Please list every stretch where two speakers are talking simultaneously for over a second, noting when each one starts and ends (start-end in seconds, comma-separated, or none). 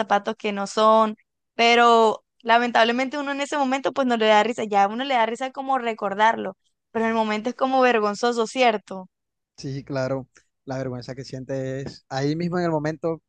none